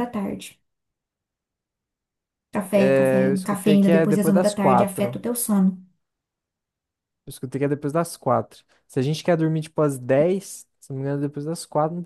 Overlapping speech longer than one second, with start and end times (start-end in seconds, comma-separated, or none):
2.7-5.2